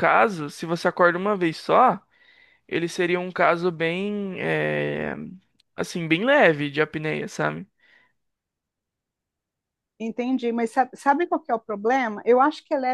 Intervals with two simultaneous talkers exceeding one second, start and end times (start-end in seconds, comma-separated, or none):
none